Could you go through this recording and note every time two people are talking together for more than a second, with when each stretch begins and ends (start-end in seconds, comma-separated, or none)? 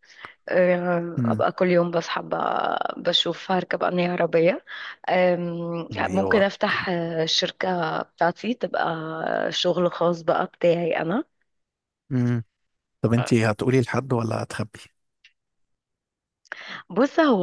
none